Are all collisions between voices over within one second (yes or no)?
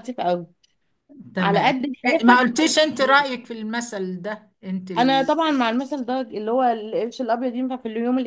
no